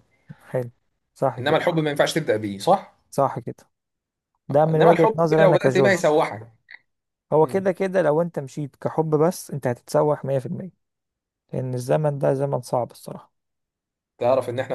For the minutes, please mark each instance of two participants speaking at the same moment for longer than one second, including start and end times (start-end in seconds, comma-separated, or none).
4.7-6.0